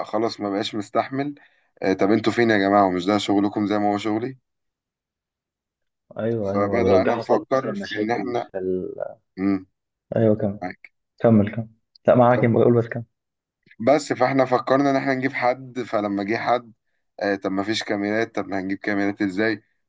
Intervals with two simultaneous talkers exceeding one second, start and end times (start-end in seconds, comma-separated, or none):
6.5-8.5